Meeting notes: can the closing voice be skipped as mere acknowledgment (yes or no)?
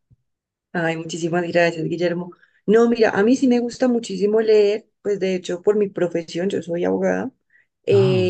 yes